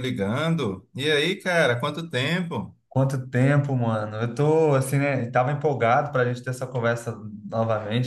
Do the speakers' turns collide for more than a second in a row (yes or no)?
no